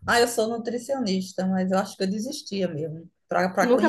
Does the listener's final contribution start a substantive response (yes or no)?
yes